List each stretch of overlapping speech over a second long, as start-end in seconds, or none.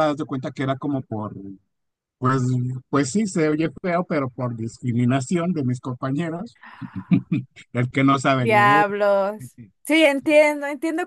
none